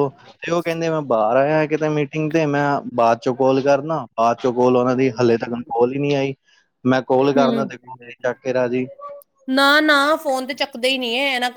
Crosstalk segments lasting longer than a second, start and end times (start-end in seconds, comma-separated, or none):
none